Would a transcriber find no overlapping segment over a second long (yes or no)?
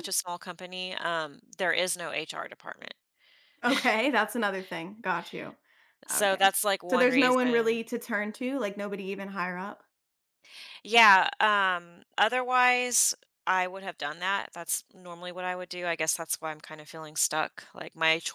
no